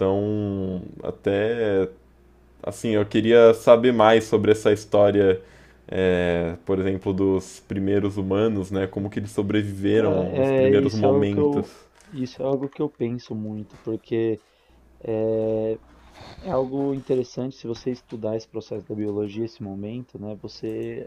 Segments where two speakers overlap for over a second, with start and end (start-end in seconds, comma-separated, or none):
9.9-11.7